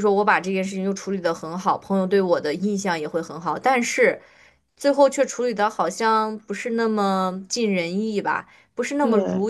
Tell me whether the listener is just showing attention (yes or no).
yes